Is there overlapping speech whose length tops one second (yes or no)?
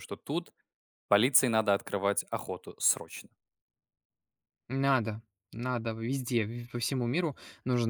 no